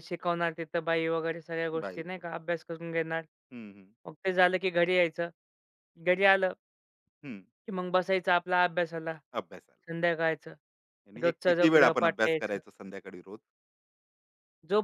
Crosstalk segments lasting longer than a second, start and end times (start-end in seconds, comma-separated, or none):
11.2-12.6